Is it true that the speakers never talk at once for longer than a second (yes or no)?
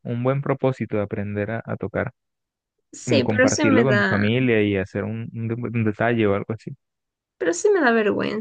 no